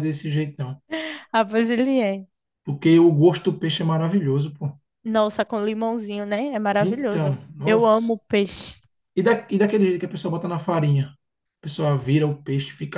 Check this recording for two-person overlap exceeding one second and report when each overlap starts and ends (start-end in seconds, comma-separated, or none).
6.8-8.1